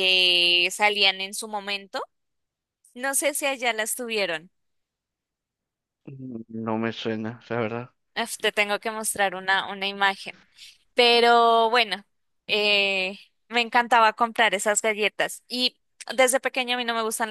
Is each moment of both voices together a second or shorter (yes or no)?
yes